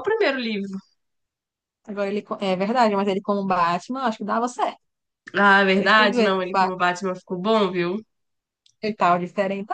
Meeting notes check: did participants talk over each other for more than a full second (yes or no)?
yes